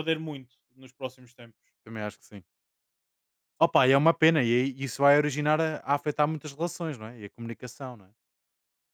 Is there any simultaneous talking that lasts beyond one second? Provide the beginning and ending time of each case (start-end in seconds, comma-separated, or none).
none